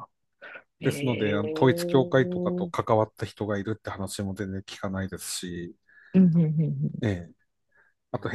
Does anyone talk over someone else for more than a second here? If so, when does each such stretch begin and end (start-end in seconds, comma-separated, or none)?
0.8-2.1